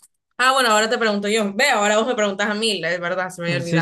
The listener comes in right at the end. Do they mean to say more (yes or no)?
yes